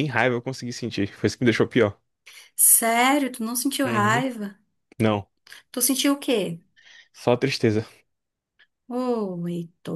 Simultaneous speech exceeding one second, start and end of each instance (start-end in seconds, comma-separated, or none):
none